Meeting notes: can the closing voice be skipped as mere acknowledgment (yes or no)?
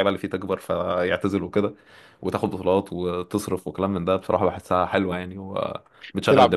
no